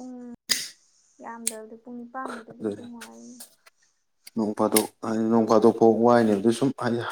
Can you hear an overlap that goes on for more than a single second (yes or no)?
no